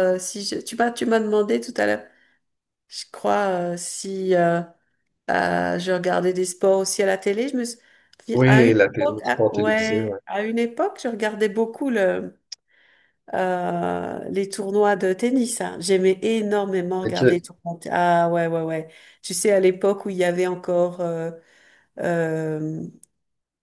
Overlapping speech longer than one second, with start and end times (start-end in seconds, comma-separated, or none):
8.5-10.2